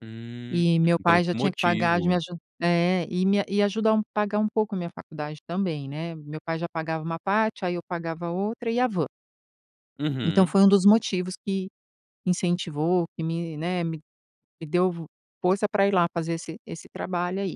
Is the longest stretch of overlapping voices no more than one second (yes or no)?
no